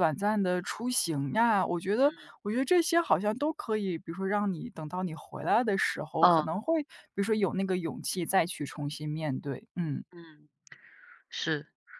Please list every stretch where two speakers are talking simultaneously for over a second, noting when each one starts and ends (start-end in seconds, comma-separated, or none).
none